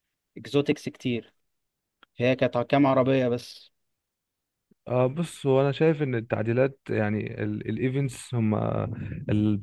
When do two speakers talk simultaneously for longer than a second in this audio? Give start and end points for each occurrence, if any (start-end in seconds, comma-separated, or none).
none